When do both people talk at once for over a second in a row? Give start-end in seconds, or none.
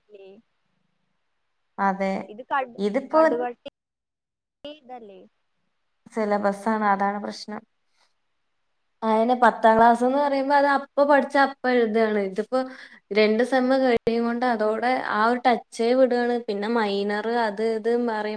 none